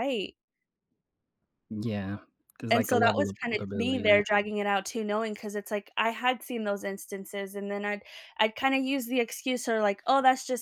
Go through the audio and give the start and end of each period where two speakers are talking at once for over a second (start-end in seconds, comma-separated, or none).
2.7-4.2